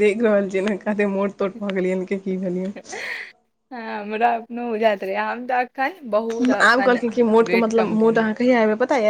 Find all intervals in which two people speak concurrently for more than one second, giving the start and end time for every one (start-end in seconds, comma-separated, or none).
none